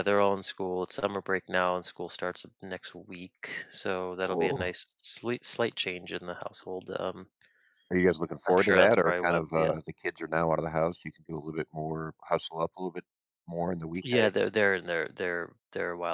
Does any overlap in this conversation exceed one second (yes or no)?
yes